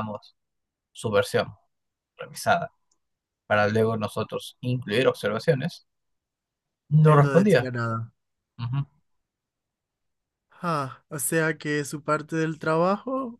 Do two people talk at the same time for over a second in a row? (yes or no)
no